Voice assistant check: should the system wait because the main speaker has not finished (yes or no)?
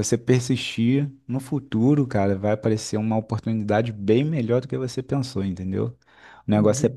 yes